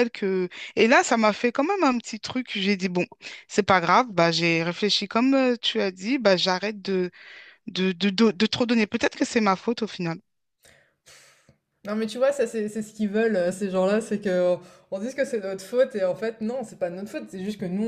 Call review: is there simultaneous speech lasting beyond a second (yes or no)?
no